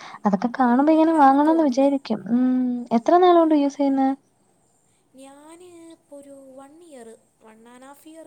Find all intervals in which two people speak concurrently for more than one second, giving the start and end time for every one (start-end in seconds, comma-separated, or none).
0.6-1.9